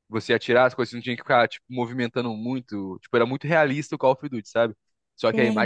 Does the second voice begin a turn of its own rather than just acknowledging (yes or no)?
no